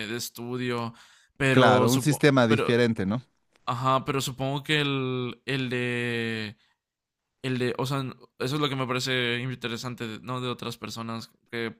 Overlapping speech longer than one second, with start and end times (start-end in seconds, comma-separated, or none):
1.5-2.8